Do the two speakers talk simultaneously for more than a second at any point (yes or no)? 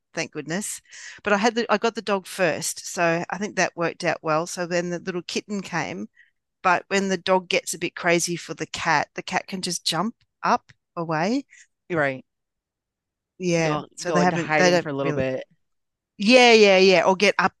yes